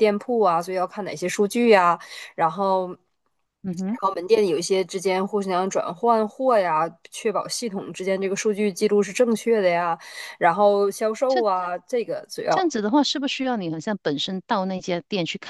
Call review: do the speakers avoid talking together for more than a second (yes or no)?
yes